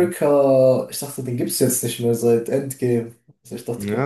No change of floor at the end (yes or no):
no